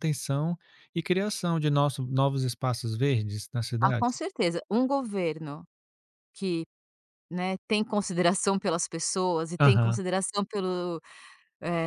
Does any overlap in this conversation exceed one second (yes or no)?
no